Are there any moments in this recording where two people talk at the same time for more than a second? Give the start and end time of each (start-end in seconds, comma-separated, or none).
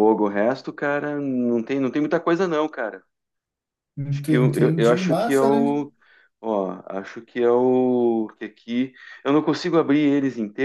4.1-5.7